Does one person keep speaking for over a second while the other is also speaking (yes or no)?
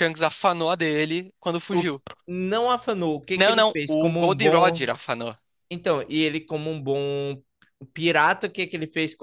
yes